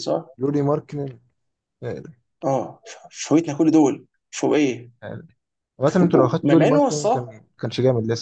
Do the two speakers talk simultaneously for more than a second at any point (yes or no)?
yes